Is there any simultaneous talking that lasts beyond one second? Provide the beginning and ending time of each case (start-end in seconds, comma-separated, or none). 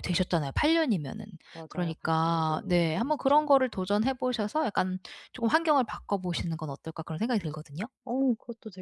1.7-3.4